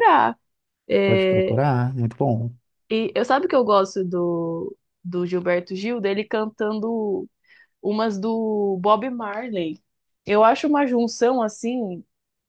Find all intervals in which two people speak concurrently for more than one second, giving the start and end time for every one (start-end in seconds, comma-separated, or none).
none